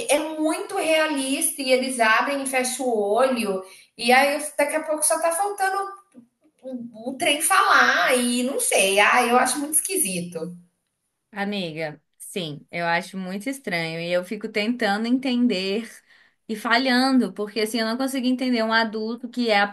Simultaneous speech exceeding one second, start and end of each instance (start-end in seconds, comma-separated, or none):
none